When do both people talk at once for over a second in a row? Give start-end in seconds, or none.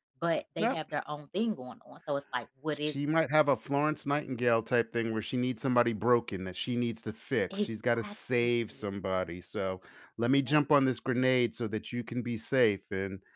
7.5-8.9